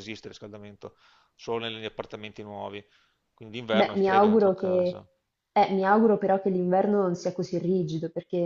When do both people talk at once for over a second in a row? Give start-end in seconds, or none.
3.7-5.0